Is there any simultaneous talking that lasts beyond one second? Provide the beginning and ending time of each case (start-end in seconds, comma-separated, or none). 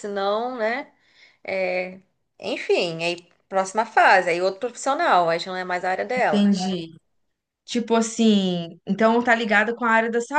none